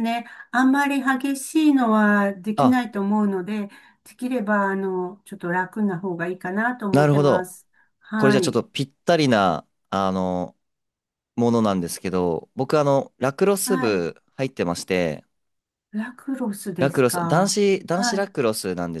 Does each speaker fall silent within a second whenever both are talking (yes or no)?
no